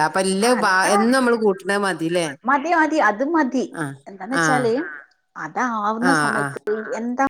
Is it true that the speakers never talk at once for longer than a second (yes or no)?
yes